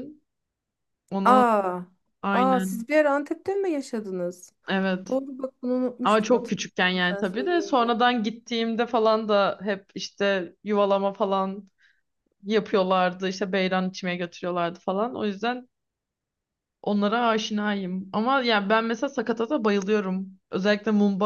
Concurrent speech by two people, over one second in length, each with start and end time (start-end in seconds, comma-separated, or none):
6.0-7.9